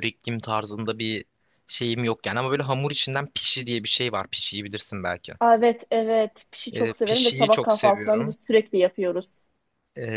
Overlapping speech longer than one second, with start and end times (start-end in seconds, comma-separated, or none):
6.7-8.3